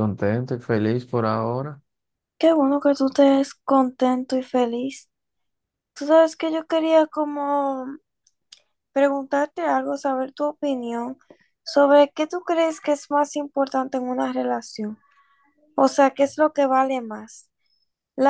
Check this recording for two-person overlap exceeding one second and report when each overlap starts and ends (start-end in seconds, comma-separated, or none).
none